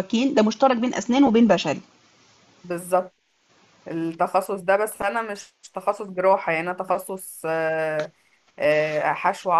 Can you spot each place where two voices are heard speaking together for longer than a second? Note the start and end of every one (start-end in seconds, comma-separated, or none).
none